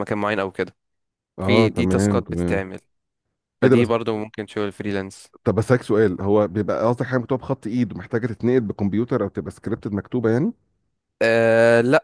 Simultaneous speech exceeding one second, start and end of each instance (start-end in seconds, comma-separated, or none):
1.4-2.6